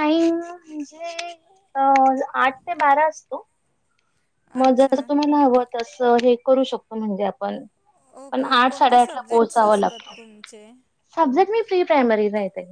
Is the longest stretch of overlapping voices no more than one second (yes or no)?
no